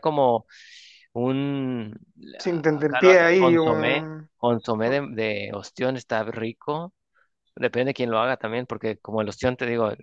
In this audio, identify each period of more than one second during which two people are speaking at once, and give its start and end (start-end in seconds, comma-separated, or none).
2.7-4.3